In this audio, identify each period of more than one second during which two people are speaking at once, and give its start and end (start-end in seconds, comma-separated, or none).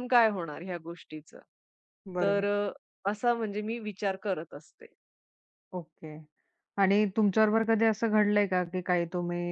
none